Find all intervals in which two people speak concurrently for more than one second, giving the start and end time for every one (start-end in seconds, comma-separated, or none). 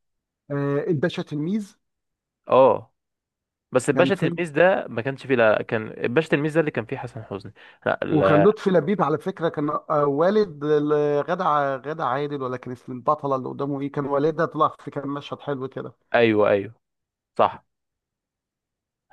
none